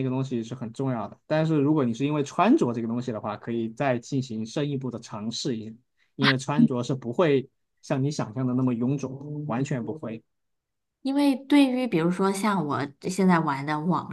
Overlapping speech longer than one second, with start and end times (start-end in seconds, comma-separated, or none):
none